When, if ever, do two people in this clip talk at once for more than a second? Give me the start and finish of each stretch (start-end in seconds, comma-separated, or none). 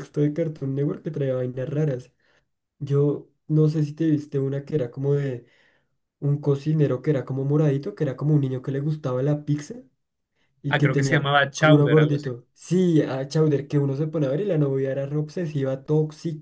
10.7-12.3